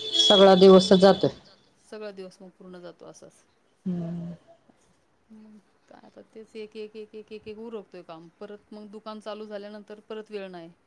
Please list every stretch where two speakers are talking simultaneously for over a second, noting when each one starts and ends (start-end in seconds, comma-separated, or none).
none